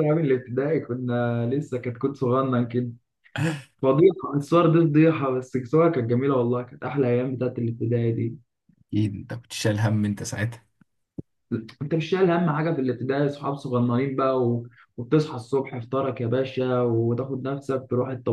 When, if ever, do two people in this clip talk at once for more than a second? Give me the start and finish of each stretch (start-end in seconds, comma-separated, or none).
none